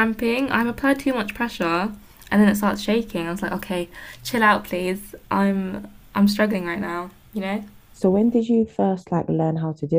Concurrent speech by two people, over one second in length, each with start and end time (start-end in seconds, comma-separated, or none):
none